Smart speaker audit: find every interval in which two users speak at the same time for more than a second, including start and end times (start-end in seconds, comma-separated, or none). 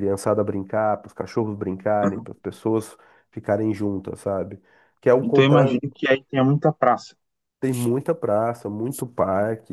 none